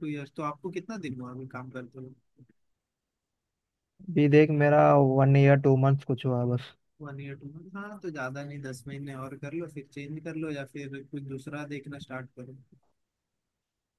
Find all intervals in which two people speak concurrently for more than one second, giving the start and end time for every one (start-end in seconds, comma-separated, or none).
none